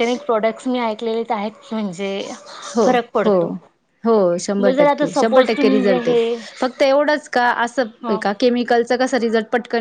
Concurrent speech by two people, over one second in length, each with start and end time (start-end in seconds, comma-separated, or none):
4.6-6.1